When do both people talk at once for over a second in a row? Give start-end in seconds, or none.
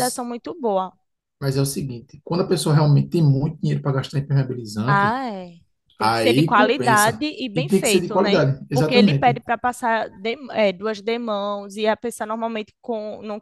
6.0-9.4